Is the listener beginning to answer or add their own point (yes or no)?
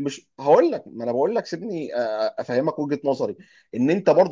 no